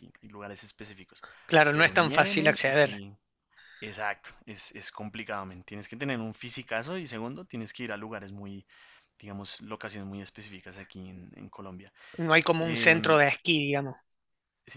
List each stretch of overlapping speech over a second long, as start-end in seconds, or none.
1.7-3.0